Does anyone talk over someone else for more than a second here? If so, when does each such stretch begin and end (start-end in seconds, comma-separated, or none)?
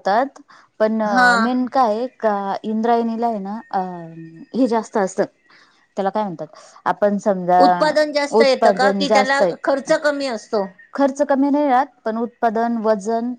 8.4-9.9